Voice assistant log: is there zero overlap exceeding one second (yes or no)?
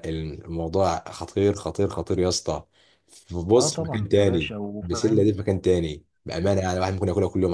no